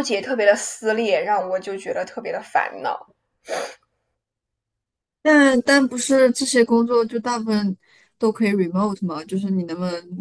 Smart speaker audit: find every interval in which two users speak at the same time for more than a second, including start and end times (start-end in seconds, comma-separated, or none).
none